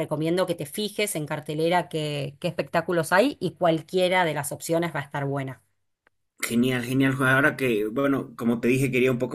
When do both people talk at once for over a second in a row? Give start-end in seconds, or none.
none